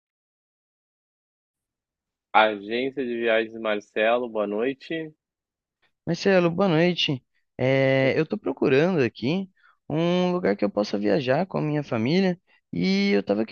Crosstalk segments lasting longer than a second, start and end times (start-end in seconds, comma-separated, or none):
none